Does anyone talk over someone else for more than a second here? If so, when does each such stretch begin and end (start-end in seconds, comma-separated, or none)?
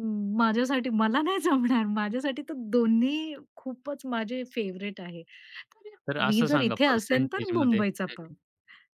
6.3-8.3